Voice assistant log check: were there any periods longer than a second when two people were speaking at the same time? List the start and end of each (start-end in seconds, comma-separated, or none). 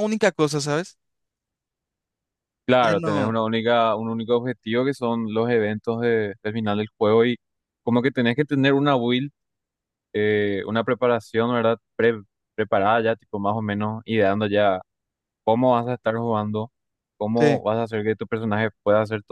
none